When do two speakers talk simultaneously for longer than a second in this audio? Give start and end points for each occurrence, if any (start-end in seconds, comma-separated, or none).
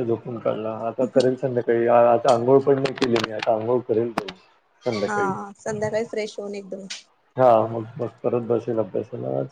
none